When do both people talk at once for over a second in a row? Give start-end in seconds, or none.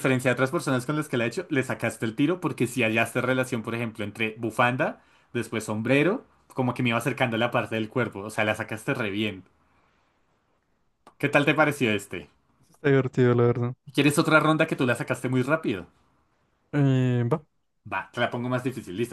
none